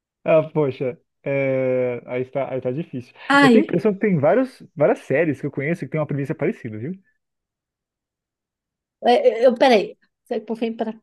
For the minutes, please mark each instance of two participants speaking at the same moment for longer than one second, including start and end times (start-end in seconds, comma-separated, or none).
none